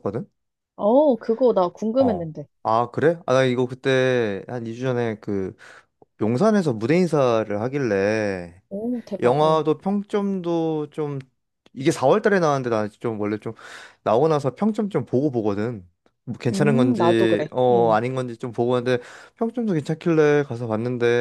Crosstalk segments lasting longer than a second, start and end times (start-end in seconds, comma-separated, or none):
16.5-18.0